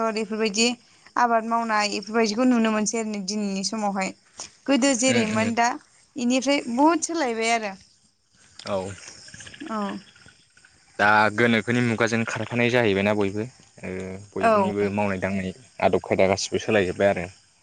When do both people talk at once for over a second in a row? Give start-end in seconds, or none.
none